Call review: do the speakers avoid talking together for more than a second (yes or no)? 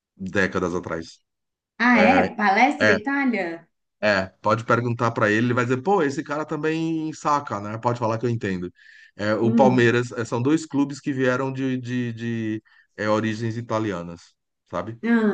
yes